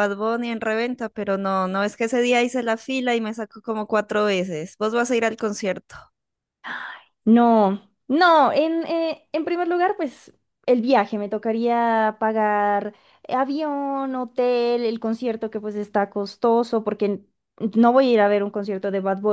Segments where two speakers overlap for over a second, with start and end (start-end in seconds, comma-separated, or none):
none